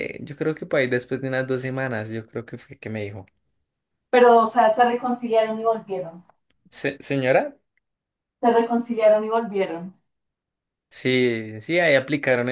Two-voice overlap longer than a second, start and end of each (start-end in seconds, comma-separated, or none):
none